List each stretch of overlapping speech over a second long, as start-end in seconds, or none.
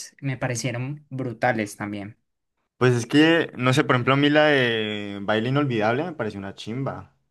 none